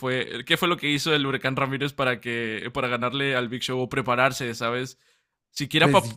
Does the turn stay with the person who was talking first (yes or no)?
yes